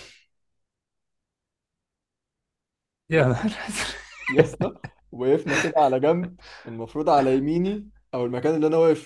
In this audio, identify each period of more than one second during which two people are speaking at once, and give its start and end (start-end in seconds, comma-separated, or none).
none